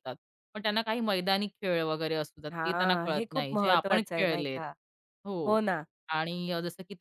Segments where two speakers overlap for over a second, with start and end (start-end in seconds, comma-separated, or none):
2.5-4.6